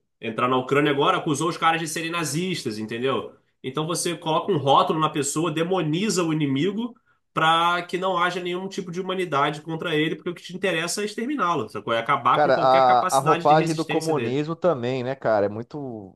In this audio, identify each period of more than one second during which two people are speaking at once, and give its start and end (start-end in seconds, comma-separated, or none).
12.3-14.4